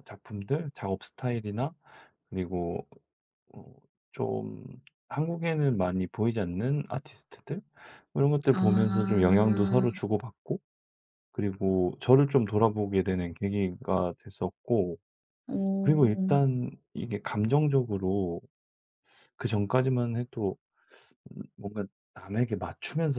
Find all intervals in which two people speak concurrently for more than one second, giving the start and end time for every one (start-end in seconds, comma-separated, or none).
8.5-9.9